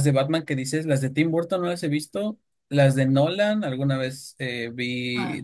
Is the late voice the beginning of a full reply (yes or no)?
no